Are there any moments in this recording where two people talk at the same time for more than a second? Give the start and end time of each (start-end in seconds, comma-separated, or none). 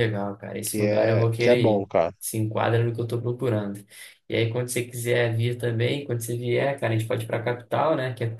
0.6-2.1